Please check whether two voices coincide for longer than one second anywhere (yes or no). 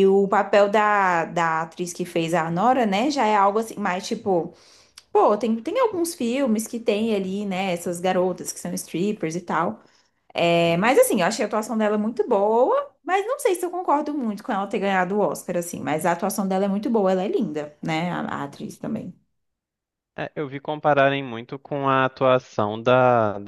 no